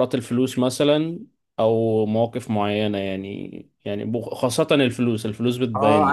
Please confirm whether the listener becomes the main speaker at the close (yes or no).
yes